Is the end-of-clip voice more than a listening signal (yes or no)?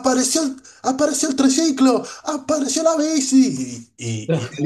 no